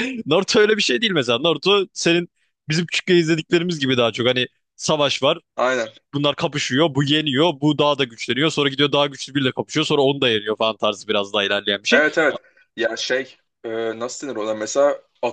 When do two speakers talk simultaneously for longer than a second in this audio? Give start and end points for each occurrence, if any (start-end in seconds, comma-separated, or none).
none